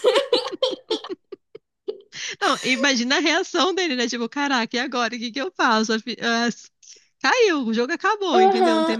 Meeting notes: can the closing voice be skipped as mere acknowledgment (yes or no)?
no